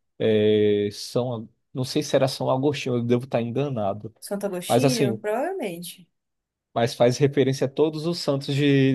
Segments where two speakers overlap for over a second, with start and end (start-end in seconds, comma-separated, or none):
none